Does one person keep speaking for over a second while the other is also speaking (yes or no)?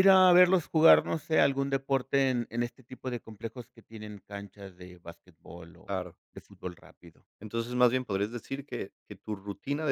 no